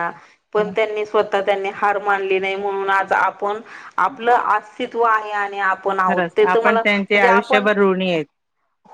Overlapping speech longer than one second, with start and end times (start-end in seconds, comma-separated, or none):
6.1-7.7